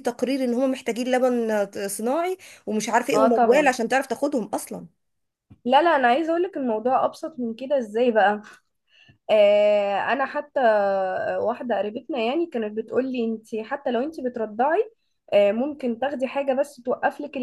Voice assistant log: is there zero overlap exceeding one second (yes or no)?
yes